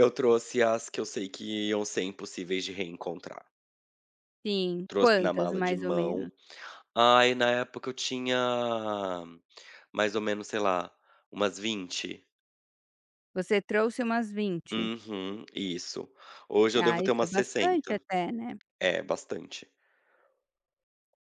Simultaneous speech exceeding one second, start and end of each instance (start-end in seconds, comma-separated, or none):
4.9-6.3, 16.8-18.0